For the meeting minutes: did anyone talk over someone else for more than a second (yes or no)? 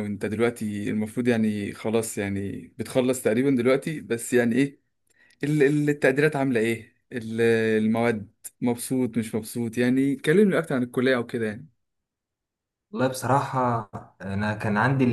no